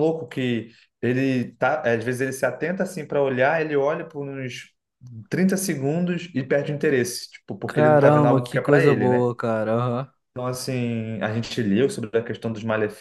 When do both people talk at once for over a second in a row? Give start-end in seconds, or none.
7.7-9.3